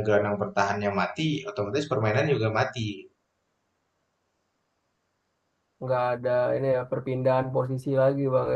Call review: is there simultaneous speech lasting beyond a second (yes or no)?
no